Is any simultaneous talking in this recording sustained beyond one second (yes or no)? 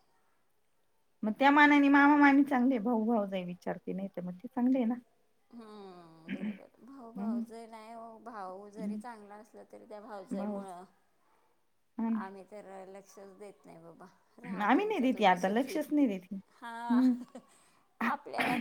yes